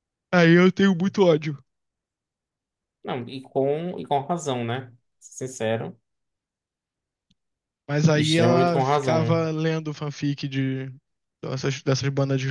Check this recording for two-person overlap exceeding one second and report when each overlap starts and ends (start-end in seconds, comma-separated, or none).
8.1-9.5